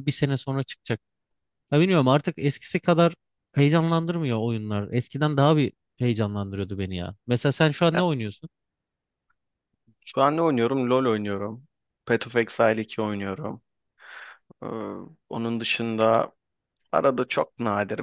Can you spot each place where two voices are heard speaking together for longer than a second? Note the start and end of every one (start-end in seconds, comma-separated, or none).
none